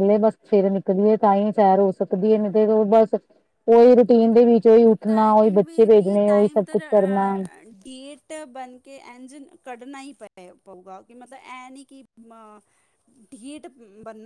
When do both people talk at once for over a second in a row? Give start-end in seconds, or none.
none